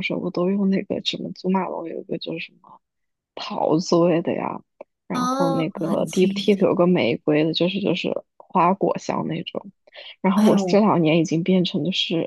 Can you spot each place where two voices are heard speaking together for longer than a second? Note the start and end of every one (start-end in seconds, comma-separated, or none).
5.1-6.7